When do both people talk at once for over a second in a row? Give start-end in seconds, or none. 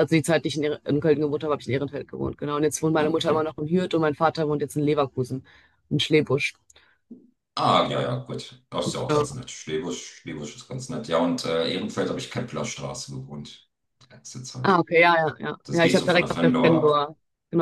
15.6-17.1